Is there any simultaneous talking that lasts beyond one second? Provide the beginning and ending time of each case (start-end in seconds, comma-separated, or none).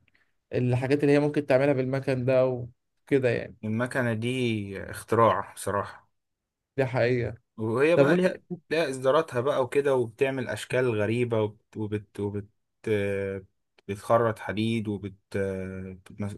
none